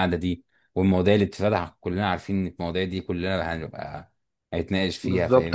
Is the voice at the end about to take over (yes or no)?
yes